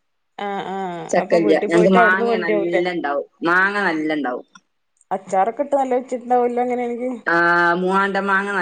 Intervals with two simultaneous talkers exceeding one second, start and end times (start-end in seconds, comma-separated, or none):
1.1-2.8